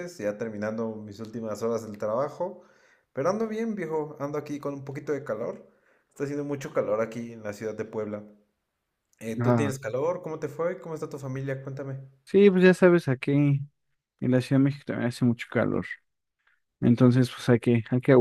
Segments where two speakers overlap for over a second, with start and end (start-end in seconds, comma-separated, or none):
none